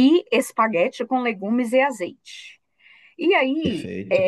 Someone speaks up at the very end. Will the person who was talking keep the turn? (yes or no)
yes